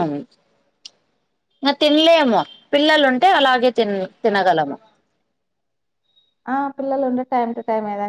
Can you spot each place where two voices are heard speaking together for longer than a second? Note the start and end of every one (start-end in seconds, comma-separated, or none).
none